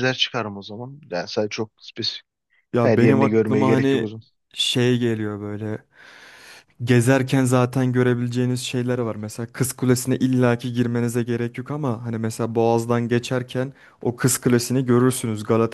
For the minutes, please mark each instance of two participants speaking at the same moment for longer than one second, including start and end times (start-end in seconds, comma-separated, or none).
2.8-4.1